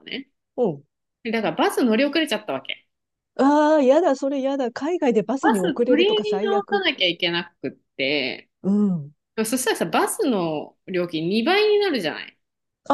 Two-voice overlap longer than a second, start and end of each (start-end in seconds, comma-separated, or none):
5.4-6.8